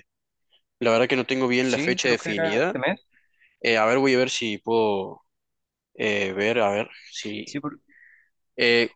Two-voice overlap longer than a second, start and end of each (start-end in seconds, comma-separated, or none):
1.6-2.8